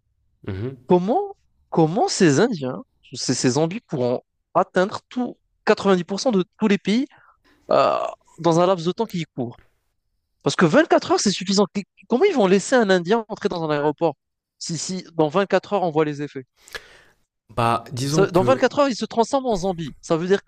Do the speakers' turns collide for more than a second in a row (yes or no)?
no